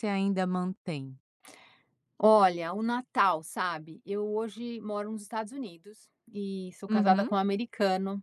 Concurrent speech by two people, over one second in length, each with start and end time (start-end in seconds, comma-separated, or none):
none